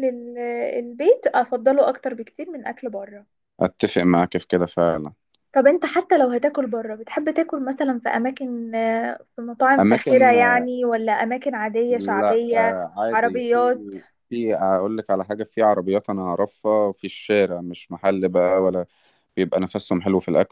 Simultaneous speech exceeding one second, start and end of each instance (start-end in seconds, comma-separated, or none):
11.9-13.7